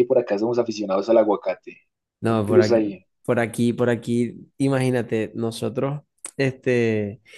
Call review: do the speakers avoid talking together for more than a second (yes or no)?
yes